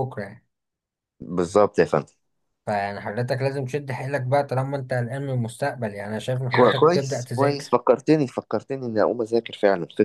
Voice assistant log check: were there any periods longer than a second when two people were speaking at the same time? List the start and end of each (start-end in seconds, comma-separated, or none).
6.5-7.8